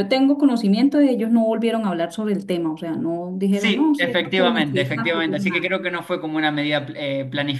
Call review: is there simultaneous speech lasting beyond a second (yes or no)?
yes